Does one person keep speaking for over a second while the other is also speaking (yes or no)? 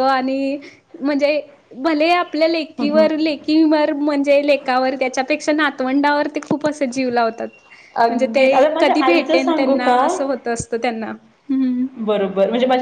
yes